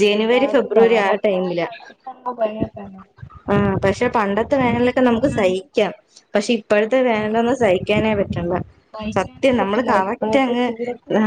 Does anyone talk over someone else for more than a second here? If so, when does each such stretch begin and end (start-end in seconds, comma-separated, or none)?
9.2-10.7